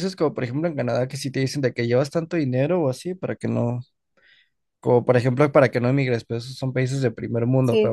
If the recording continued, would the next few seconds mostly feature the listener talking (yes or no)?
no